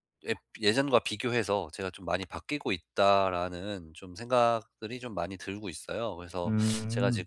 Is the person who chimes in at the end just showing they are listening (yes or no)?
yes